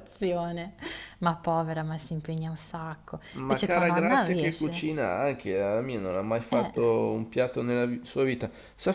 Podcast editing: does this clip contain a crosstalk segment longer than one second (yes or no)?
yes